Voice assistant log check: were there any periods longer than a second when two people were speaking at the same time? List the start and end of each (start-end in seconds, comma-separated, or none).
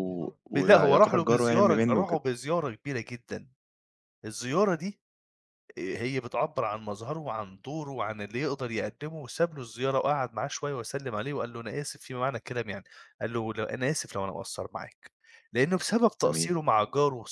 0.6-2.2